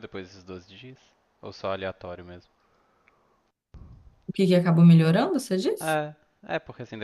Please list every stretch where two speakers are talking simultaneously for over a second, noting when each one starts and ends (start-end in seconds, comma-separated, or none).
none